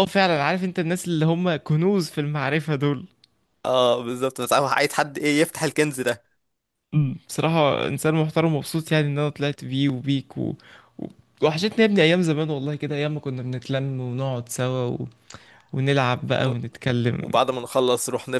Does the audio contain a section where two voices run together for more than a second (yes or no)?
no